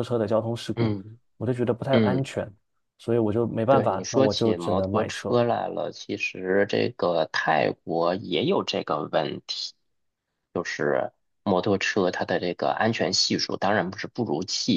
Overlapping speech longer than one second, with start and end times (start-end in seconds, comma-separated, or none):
3.7-5.4